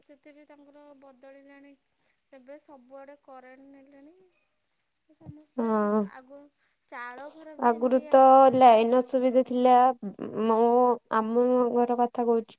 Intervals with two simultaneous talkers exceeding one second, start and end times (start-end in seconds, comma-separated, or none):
none